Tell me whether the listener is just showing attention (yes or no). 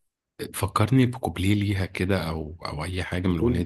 no